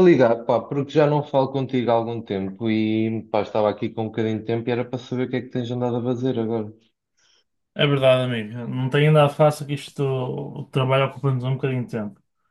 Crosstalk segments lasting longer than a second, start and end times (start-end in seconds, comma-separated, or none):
none